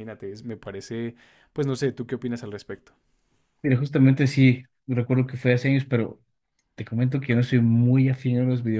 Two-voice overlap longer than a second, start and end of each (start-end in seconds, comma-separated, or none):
none